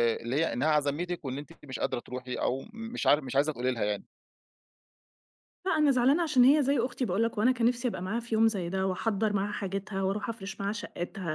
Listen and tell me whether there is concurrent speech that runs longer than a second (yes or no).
no